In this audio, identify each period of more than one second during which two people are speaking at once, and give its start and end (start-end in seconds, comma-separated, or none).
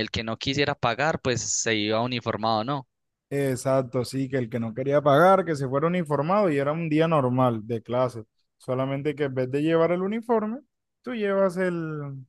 none